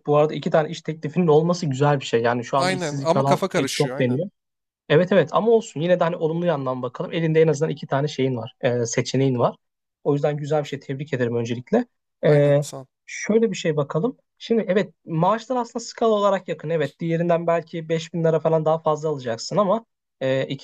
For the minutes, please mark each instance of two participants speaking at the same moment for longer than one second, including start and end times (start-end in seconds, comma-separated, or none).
2.5-4.2